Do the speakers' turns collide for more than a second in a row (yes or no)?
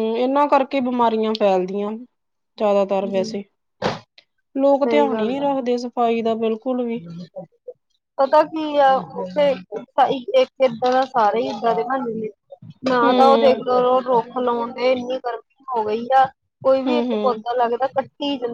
no